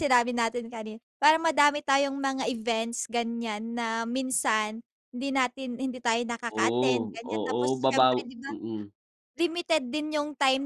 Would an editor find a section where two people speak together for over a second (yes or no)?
yes